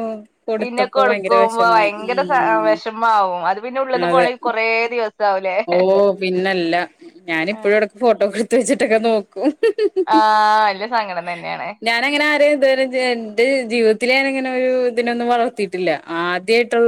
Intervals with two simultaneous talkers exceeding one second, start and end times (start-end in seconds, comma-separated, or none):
0.6-2.7